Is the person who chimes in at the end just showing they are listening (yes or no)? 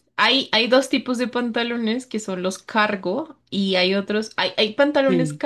yes